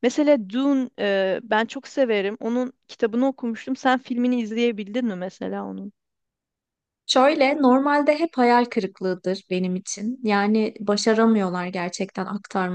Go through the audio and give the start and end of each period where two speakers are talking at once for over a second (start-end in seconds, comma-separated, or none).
none